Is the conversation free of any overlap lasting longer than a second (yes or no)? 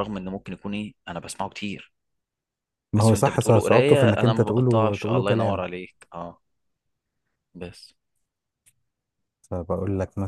no